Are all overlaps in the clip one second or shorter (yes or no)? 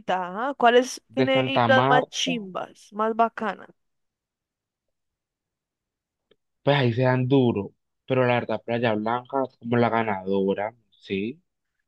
no